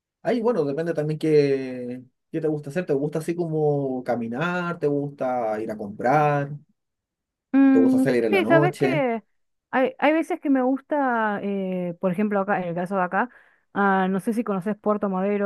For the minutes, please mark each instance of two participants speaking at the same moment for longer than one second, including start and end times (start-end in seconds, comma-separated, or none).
7.7-9.1